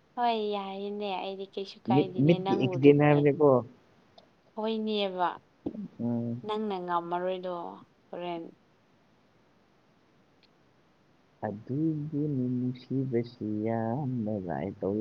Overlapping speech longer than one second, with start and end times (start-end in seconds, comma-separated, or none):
1.9-3.2